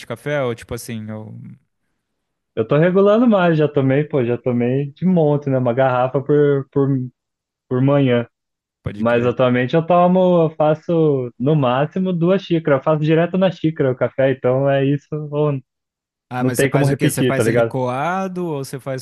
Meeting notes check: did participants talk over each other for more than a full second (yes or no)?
yes